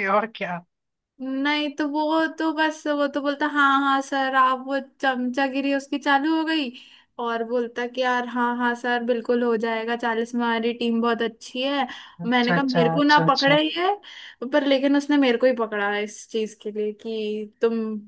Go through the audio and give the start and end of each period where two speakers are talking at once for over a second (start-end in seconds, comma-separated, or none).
12.3-13.6